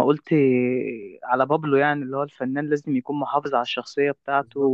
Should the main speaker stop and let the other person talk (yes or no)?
no